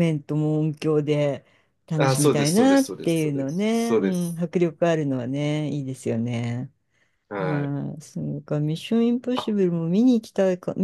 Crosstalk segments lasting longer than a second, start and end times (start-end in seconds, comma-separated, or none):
2.0-4.4